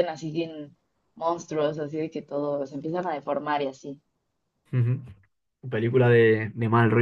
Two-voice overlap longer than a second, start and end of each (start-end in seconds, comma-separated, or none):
none